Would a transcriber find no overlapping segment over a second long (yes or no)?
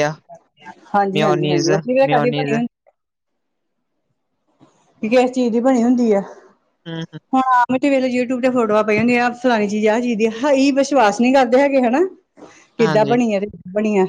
no